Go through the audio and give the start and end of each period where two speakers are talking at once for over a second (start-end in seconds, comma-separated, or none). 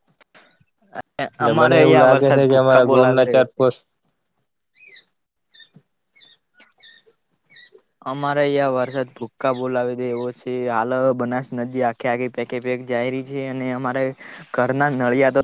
1.5-3.7